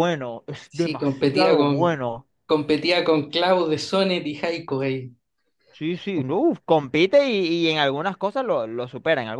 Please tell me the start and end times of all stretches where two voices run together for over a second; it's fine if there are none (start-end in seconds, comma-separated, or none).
0.7-2.0